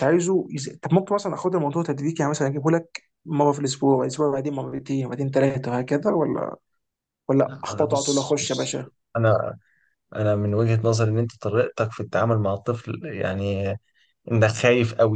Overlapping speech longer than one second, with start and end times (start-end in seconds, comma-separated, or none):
7.5-8.8